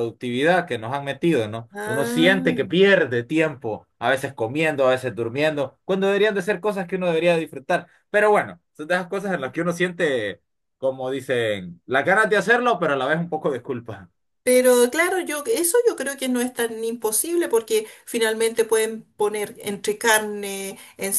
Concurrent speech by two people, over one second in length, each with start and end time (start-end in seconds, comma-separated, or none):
1.7-2.9